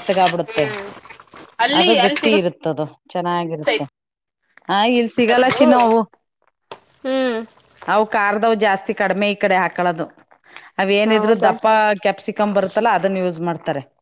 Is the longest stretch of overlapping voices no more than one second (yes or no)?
yes